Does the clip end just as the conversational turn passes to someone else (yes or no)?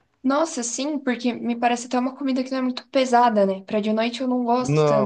no